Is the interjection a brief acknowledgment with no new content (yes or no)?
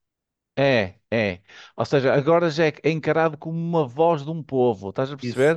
yes